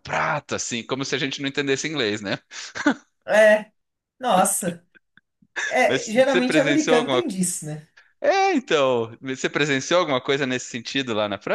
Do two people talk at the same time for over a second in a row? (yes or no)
yes